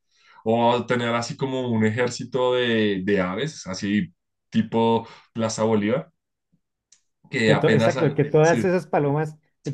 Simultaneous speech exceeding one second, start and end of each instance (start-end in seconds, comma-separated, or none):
7.4-8.7